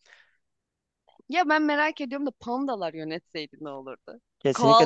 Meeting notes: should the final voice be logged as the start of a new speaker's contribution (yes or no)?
yes